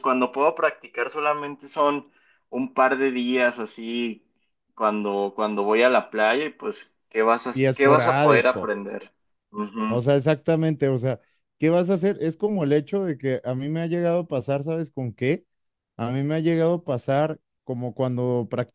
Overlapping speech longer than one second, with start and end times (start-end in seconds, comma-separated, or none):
7.5-8.8